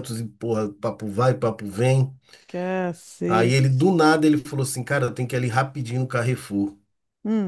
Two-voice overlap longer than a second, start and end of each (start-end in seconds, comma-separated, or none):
none